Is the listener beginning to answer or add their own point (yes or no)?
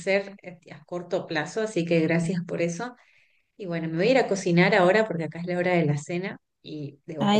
yes